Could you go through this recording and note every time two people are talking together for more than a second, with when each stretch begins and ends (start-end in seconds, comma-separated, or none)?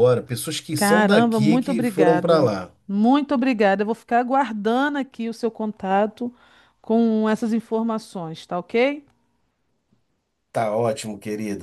0.8-2.5